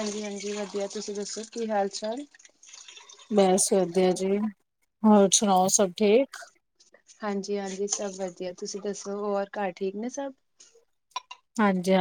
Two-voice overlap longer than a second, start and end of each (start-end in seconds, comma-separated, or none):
none